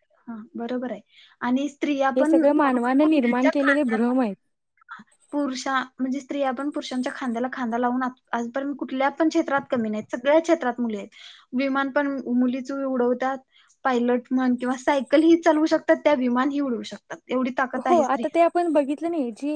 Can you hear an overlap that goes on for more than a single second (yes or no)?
yes